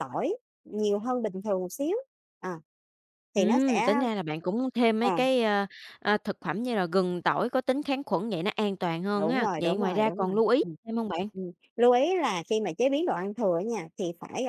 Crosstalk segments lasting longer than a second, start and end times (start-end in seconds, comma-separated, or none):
9.2-10.8